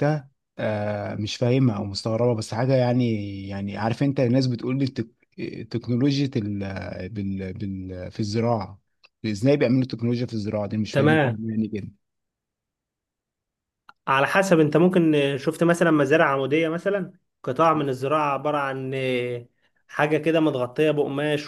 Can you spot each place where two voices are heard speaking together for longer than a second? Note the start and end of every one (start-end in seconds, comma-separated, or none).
none